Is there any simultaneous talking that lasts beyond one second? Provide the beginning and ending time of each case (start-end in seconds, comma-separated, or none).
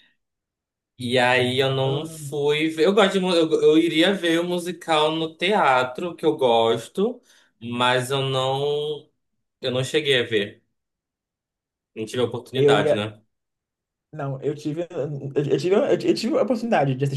none